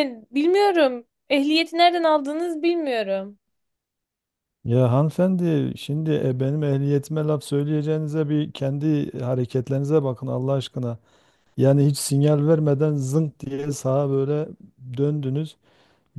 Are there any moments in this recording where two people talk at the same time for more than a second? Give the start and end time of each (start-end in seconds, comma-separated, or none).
none